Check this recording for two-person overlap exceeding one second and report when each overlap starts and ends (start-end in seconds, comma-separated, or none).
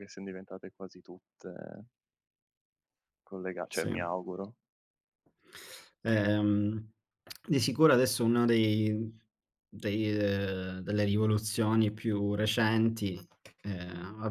none